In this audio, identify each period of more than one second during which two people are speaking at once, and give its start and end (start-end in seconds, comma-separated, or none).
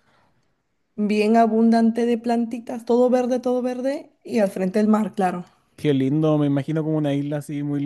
none